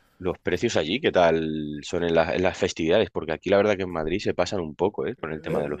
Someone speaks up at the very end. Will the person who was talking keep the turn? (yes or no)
no